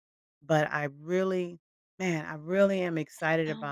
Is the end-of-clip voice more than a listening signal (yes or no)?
no